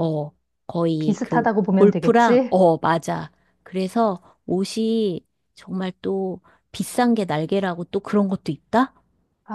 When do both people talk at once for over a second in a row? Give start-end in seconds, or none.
1.0-2.6